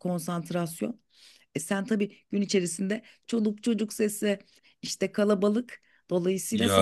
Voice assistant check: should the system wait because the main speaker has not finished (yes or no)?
no